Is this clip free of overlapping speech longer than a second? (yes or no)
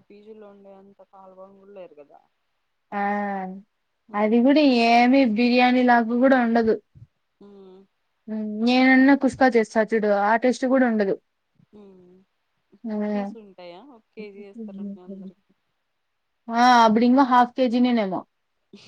yes